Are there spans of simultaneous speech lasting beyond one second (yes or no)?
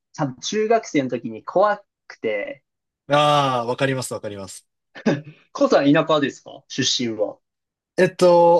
no